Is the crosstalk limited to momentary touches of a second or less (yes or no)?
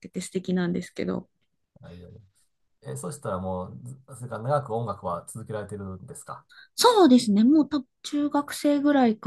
yes